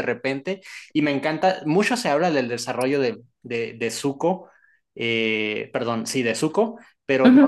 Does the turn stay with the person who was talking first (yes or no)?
yes